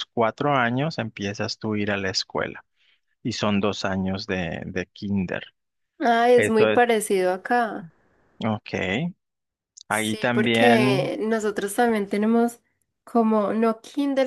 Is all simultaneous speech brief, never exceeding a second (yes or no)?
no